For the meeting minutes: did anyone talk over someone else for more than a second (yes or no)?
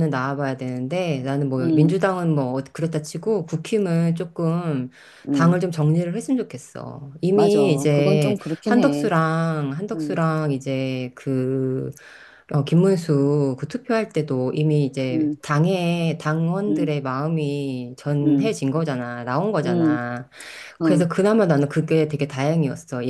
yes